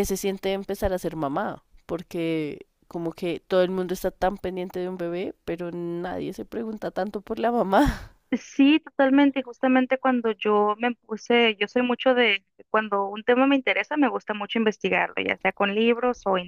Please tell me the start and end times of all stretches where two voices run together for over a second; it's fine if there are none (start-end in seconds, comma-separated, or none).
none